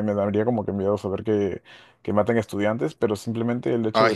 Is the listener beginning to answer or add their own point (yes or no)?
no